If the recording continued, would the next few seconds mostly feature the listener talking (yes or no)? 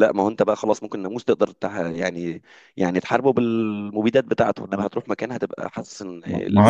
yes